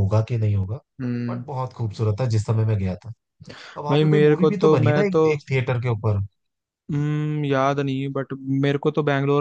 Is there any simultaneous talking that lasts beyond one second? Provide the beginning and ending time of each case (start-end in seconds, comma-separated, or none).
3.9-5.2